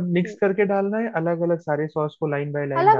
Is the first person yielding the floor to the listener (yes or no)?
yes